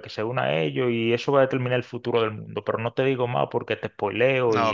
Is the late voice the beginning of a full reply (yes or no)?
yes